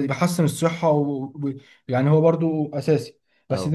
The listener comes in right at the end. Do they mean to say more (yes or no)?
no